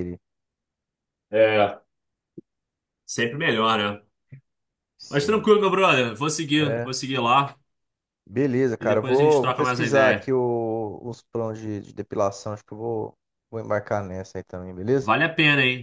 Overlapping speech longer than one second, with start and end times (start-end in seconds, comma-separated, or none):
8.8-10.3